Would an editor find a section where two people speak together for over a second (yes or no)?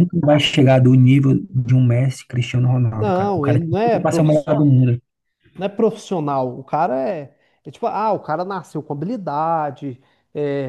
yes